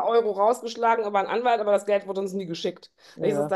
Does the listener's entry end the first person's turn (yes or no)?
no